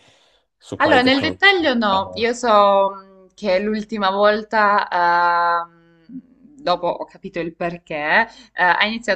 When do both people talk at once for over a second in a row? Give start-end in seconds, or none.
0.8-2.3